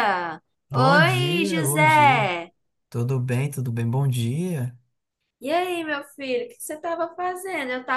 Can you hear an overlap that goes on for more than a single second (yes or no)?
yes